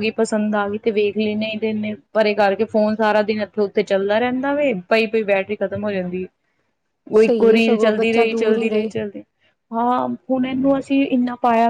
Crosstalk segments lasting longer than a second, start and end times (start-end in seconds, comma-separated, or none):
7.2-8.9